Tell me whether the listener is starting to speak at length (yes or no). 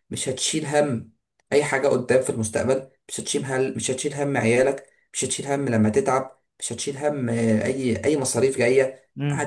yes